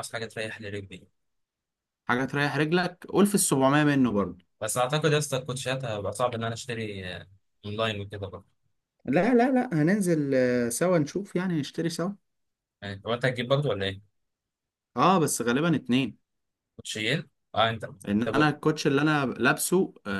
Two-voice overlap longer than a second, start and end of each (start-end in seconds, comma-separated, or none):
none